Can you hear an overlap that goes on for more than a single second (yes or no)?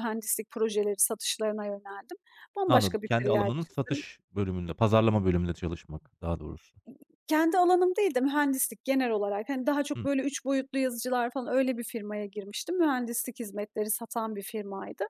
yes